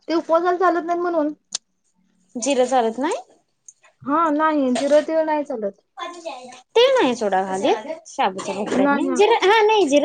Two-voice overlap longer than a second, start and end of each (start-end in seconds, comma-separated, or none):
none